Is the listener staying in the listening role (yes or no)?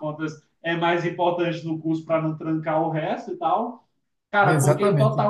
yes